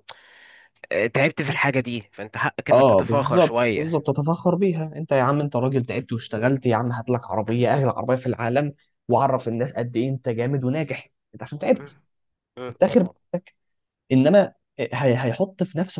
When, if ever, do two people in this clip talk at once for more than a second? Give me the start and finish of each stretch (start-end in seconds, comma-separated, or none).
2.7-4.0